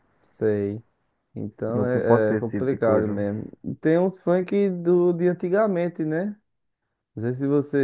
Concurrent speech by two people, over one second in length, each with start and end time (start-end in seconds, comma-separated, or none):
1.7-3.2